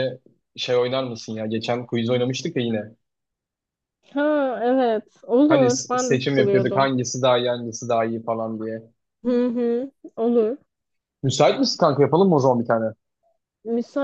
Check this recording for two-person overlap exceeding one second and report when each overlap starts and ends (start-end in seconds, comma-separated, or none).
5.5-6.9